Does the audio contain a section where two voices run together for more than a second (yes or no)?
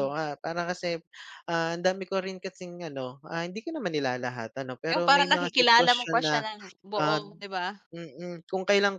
yes